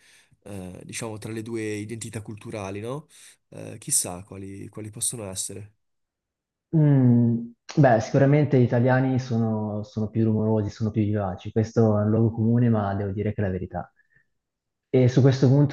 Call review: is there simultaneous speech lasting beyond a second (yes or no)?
no